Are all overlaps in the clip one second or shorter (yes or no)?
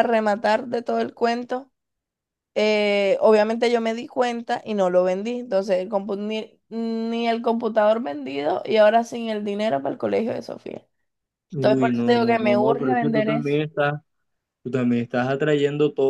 no